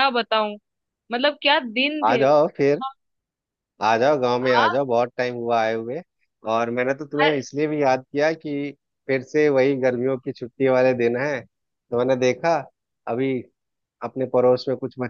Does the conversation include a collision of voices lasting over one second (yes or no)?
no